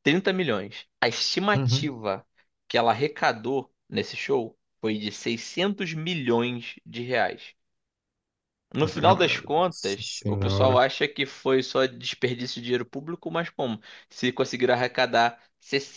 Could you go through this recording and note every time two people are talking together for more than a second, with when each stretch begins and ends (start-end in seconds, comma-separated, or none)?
8.8-10.8